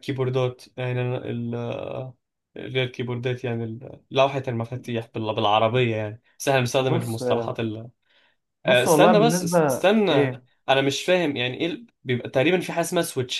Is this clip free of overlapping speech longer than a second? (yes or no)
no